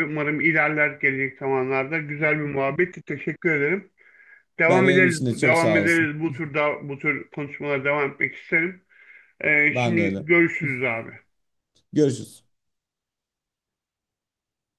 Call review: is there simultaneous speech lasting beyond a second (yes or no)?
yes